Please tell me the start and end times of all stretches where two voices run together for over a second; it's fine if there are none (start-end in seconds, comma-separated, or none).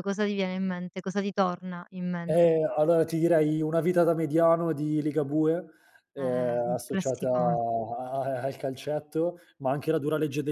6.2-7.6